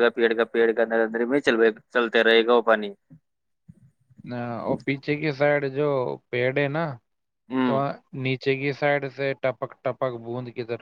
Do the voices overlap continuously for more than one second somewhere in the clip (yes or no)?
no